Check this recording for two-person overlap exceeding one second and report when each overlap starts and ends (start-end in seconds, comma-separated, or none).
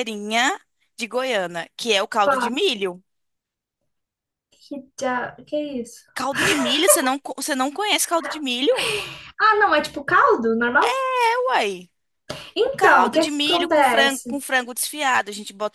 12.6-14.4